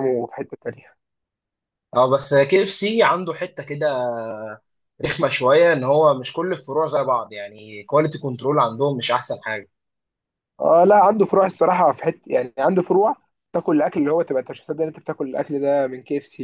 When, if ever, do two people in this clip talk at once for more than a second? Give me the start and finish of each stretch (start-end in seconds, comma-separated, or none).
none